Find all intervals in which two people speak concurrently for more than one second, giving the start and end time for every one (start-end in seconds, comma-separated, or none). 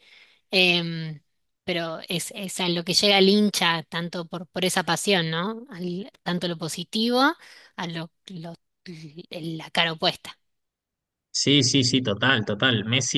none